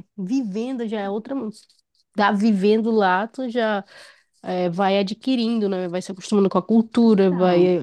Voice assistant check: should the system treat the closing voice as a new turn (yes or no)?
no